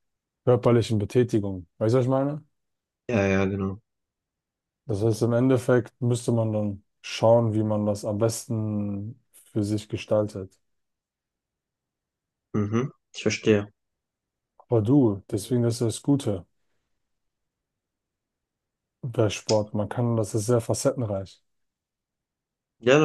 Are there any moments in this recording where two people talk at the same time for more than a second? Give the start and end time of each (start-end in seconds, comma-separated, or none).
none